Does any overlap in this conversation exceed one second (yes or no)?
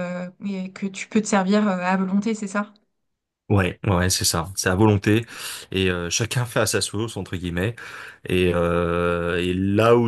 no